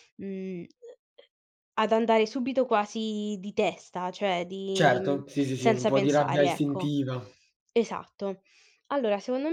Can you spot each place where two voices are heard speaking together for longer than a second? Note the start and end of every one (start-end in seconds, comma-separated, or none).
4.7-7.0